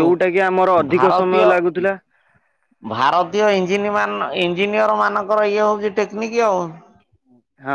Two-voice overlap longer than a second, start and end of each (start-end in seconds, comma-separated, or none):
none